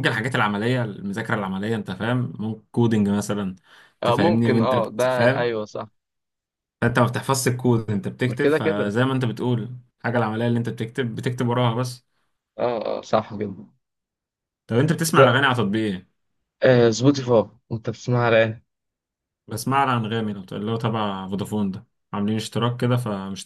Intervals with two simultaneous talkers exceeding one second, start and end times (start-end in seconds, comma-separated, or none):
4.0-5.5